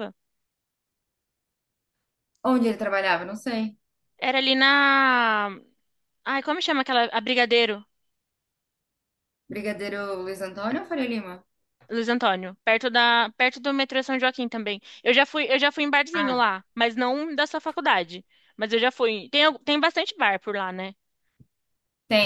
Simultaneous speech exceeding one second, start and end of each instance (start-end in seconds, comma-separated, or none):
none